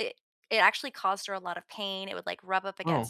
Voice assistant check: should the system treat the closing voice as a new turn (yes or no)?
no